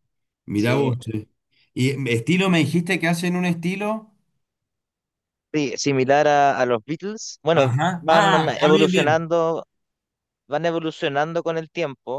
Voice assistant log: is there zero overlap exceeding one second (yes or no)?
no